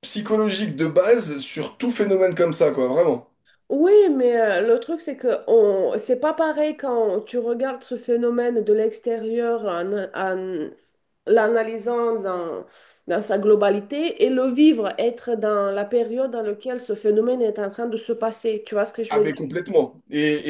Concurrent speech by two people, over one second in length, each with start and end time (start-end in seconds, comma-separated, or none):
none